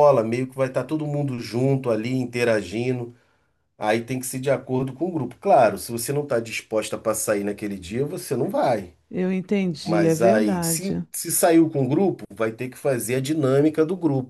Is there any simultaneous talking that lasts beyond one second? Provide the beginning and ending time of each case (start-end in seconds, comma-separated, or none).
9.8-11.1